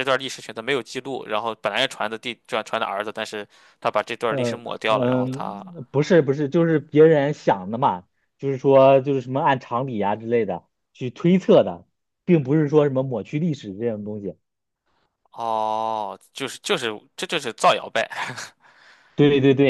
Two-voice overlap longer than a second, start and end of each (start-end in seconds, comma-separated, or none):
4.3-5.6